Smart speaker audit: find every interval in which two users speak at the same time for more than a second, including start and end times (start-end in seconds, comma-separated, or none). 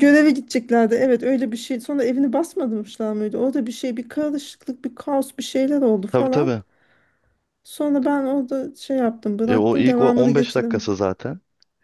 9.4-11.0